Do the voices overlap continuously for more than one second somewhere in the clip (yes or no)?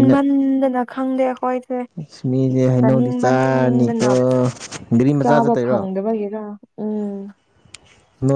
yes